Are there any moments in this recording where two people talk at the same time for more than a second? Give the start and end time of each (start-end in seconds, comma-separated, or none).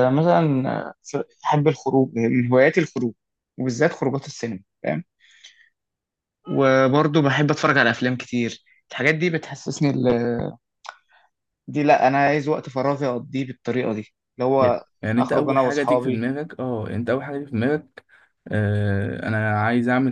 14.6-16.3